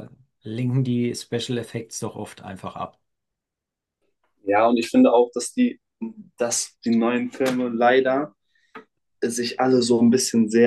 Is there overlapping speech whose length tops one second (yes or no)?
no